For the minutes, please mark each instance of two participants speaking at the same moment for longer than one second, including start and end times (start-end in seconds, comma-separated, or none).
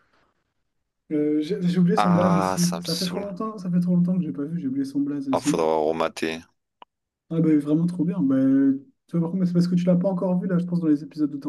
2.0-3.3